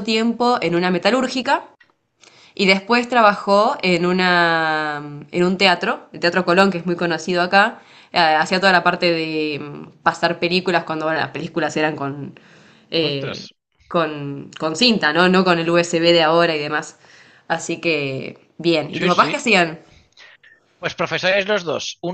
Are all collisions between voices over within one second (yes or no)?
yes